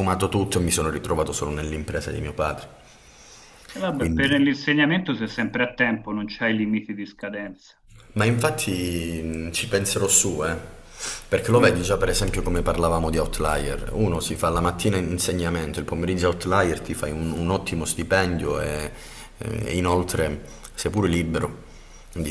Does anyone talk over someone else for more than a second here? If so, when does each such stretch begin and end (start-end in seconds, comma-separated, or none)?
none